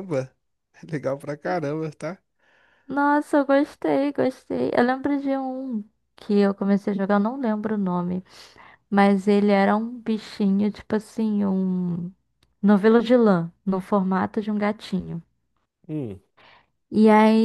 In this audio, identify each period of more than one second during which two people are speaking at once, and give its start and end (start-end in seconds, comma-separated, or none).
none